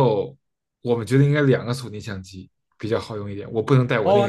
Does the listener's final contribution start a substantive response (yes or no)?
yes